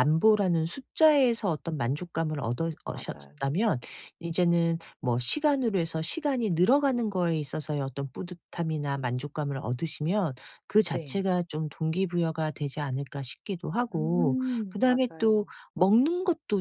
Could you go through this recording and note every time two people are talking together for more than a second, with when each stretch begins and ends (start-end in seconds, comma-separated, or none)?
13.9-15.5